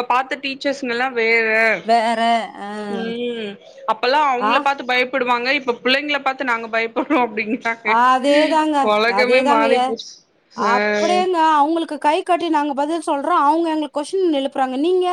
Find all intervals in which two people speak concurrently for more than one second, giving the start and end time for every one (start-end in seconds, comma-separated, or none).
none